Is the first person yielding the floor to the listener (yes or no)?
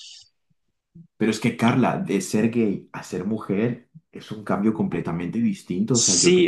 yes